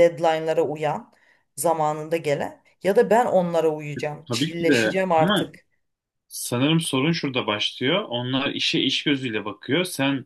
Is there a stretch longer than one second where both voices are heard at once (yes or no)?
yes